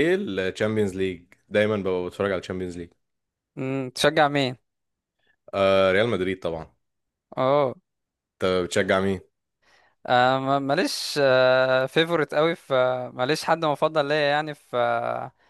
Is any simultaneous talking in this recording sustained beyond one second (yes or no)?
no